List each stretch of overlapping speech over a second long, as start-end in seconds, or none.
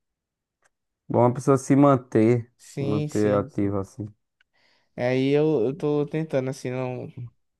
2.6-3.8